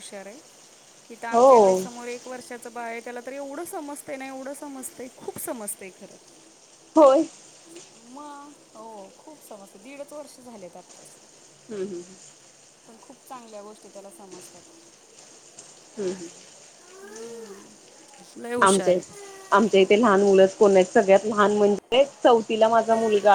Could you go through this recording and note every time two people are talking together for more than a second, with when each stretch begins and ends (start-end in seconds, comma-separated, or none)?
none